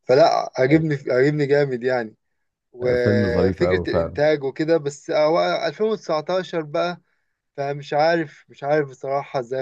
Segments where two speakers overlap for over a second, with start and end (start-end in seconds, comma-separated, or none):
2.8-4.2